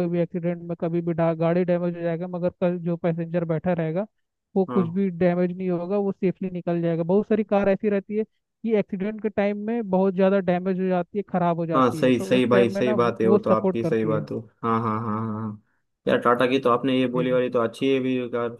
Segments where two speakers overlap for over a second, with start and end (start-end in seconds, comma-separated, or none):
11.7-14.3